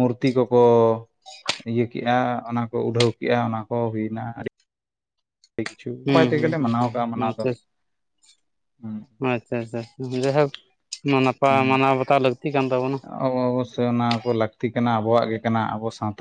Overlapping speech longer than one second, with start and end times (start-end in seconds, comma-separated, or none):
6.1-7.5